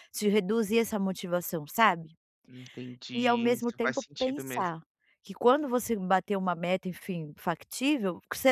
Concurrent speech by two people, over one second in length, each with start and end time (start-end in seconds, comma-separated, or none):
3.1-4.8